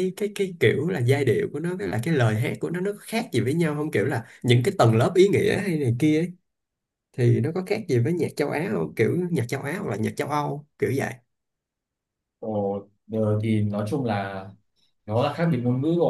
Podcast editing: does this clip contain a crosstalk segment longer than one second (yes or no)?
no